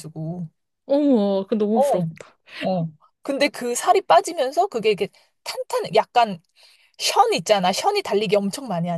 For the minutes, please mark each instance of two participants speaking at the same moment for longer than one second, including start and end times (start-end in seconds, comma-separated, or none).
none